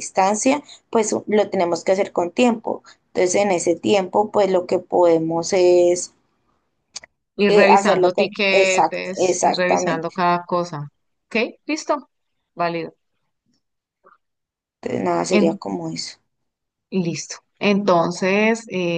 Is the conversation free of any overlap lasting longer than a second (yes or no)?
no